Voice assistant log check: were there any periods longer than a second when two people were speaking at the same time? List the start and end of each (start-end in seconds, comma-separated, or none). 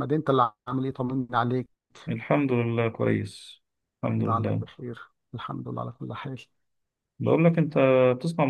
none